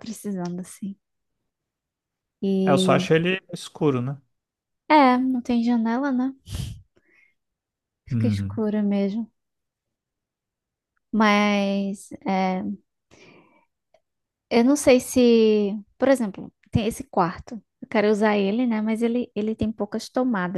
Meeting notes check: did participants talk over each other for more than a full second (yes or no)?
no